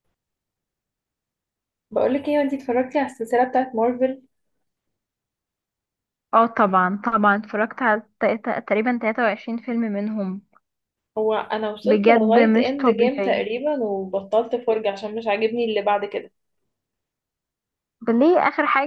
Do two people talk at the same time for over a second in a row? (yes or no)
yes